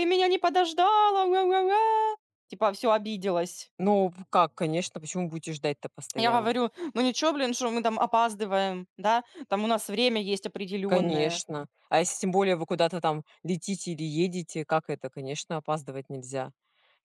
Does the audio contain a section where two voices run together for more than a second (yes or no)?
no